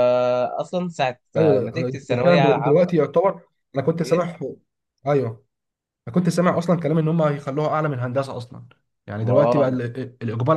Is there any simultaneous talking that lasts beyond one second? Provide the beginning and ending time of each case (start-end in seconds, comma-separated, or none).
1.4-2.9